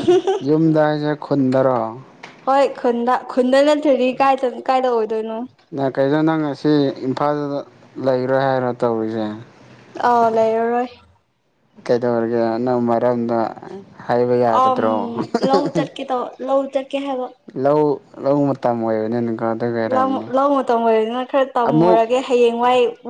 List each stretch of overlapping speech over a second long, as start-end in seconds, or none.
none